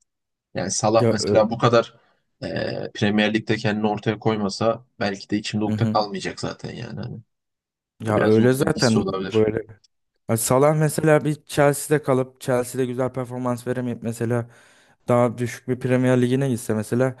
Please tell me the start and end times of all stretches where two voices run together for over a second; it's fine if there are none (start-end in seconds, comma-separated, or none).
8.1-9.4